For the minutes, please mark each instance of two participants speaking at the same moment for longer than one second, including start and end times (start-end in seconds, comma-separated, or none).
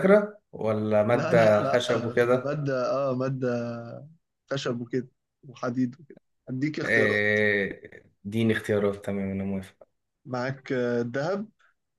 1.1-2.6